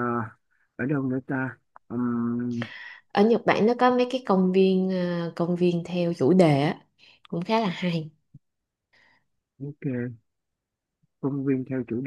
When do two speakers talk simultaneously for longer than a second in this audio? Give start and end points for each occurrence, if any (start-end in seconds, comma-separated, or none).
none